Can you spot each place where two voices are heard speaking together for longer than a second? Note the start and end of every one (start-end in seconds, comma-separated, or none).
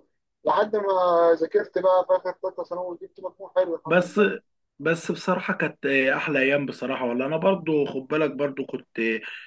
none